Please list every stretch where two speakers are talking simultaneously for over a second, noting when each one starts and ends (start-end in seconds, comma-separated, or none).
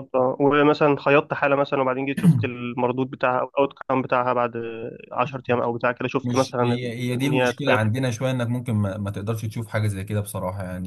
6.2-7.9